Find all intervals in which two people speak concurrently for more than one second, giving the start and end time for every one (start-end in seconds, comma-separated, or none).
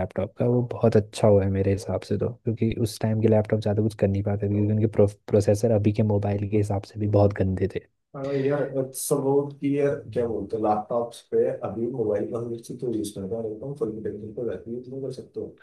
none